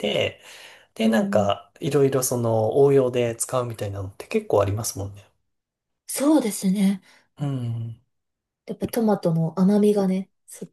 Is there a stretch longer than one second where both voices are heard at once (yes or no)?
no